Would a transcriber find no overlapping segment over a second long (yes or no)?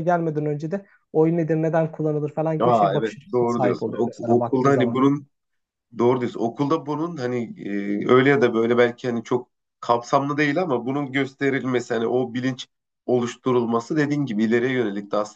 no